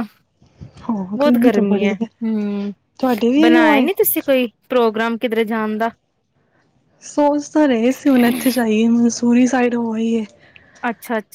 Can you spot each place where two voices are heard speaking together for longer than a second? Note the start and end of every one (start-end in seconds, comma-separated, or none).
none